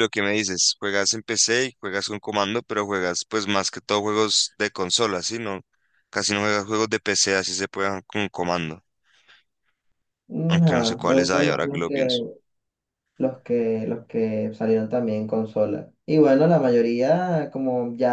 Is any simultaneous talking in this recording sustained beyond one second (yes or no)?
yes